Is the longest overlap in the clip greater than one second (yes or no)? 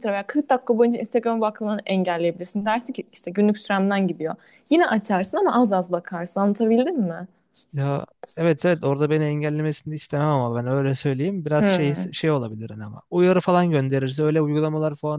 no